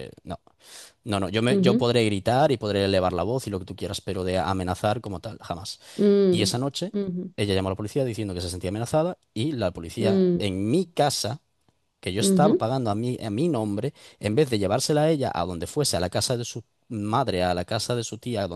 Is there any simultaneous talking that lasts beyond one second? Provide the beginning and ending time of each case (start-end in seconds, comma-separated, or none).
none